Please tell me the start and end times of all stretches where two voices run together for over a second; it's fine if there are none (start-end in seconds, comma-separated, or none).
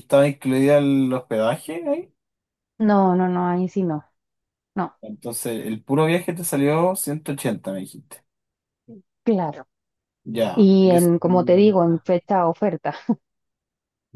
10.5-12.1